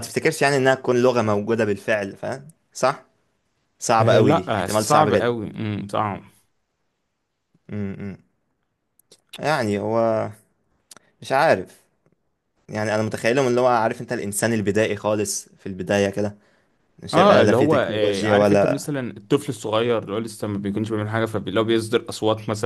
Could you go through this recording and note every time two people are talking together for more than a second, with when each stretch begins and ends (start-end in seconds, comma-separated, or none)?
4.0-5.3, 17.1-18.9